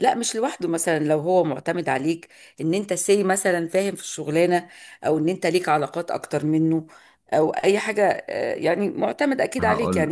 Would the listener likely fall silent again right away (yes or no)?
yes